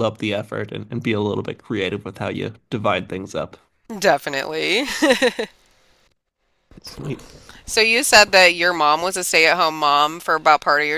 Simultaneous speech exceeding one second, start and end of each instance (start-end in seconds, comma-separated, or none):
none